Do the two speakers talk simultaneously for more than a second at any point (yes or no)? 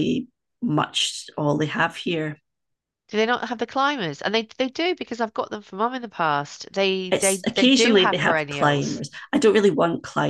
yes